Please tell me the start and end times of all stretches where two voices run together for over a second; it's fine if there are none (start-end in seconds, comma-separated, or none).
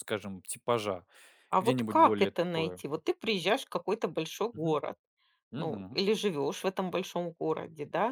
1.6-2.8